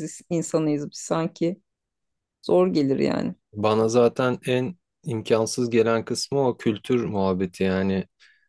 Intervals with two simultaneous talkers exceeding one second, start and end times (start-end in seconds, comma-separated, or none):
none